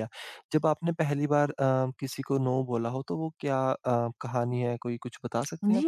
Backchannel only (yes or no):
no